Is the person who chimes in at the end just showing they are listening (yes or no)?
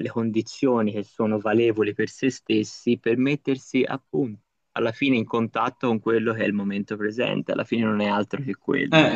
no